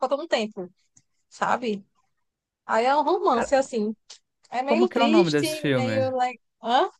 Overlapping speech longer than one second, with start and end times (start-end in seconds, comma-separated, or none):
4.7-6.1